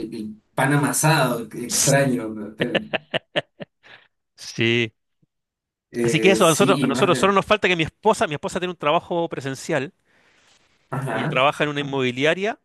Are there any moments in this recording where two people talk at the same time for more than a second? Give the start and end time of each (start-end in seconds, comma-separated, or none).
6.0-7.3